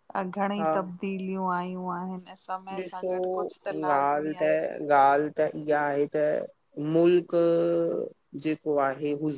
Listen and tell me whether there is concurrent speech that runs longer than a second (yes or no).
no